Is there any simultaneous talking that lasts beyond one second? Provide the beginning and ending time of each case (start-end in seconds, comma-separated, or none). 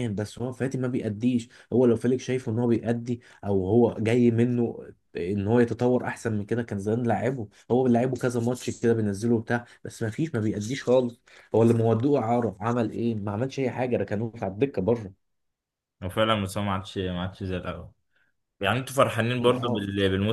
none